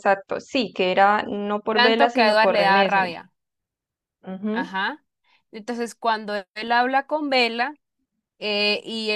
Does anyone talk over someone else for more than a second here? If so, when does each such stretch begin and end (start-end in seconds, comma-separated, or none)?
1.8-3.1